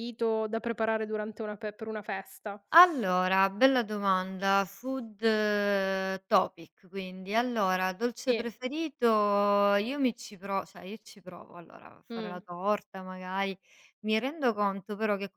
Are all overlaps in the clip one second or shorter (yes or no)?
yes